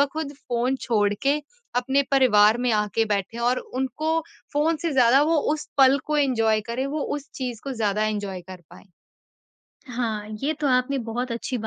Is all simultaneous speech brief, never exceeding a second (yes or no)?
yes